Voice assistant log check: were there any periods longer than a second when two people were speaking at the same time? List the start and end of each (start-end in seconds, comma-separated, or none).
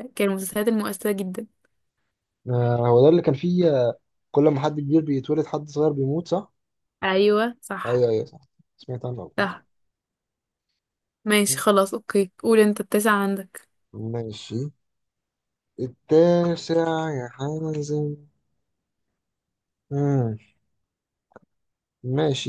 none